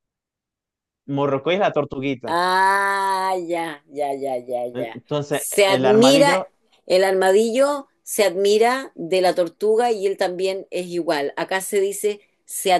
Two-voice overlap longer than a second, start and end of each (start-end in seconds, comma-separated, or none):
4.7-6.4